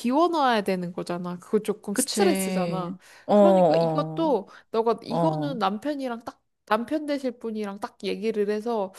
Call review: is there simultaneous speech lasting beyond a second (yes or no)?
yes